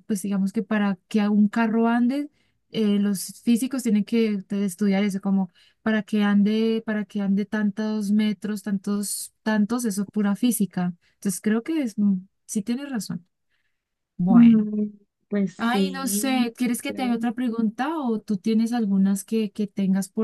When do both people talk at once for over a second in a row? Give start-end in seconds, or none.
15.6-17.1